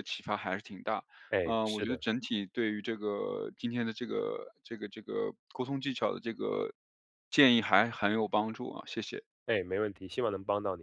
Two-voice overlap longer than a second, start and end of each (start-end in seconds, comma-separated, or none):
none